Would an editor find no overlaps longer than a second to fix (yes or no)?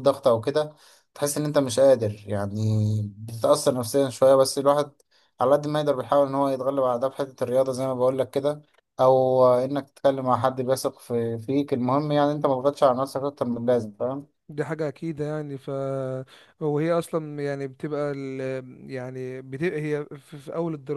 yes